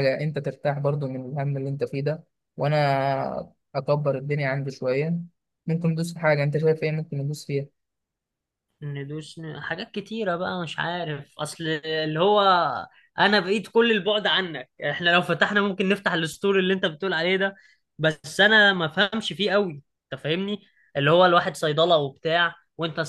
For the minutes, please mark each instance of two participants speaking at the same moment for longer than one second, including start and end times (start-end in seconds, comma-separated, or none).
none